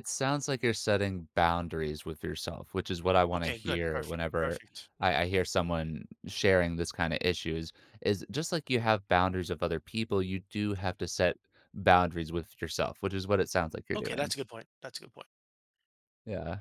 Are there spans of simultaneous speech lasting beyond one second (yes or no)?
yes